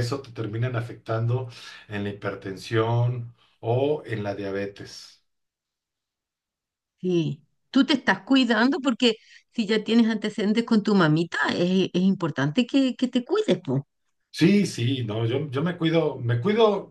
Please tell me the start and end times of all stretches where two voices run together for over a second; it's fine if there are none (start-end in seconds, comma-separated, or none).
none